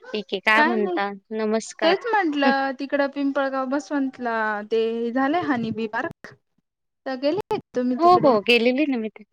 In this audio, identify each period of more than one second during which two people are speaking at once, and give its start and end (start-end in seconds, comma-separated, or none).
none